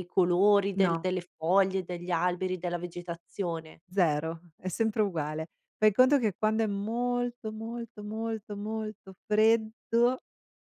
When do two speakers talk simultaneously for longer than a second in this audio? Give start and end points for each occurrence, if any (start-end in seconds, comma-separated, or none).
none